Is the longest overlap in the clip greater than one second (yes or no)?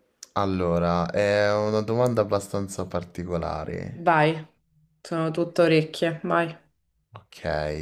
no